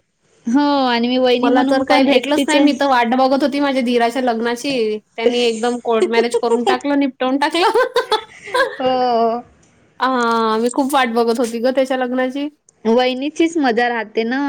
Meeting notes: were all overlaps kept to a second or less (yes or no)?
no